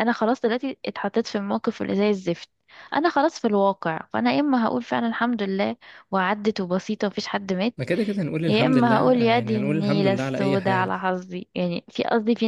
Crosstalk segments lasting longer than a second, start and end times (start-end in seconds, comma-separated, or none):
8.5-10.9